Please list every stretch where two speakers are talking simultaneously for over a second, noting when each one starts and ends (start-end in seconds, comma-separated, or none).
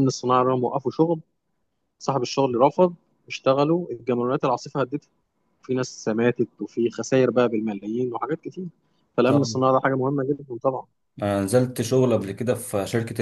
none